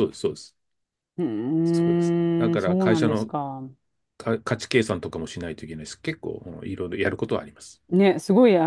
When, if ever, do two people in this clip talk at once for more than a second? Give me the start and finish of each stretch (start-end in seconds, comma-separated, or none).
1.6-3.3